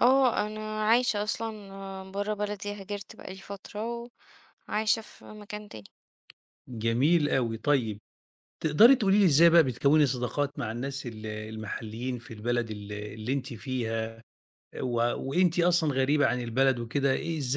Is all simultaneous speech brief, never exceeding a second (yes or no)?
yes